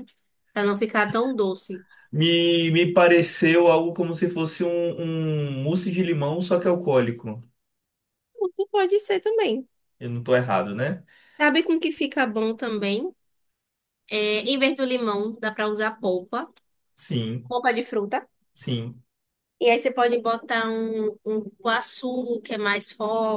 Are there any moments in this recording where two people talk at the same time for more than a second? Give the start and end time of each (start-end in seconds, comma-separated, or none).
none